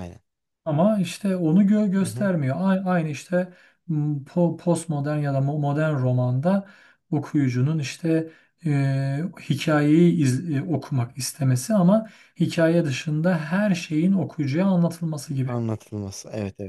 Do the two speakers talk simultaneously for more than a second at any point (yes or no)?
no